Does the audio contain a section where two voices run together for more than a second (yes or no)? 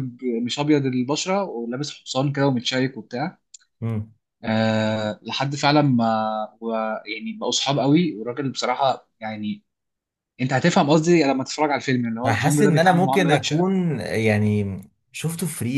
yes